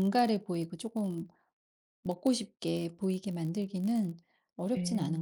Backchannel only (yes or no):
no